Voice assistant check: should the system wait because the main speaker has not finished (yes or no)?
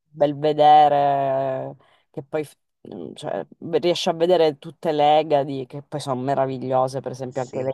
yes